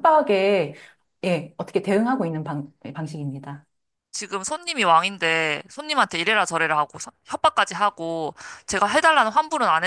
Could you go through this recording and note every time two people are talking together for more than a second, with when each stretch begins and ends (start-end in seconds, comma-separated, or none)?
none